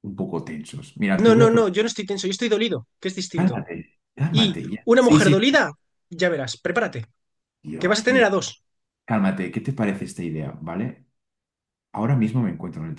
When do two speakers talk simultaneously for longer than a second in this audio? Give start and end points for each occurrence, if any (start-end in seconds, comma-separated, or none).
4.3-5.6